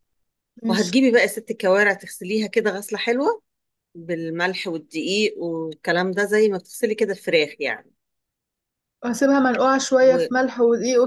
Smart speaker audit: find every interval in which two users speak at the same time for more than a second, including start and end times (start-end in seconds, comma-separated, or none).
none